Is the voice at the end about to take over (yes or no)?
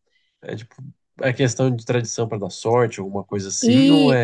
yes